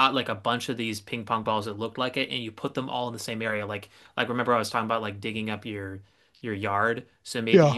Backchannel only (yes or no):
yes